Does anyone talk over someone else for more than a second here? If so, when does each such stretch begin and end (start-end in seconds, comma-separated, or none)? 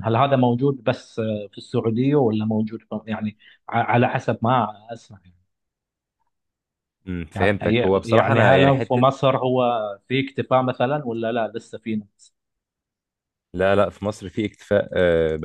7.3-9.0